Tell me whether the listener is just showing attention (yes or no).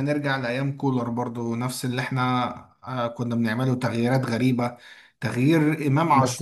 yes